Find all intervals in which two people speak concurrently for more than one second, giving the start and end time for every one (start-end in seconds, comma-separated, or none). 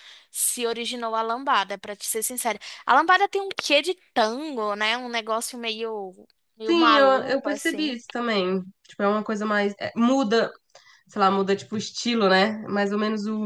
6.7-8.0